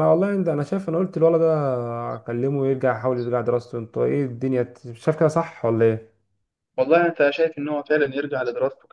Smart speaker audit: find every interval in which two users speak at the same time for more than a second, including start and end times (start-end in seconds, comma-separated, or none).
none